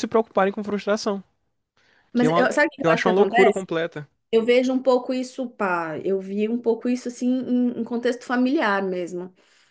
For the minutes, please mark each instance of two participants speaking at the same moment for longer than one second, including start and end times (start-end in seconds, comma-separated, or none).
2.1-3.6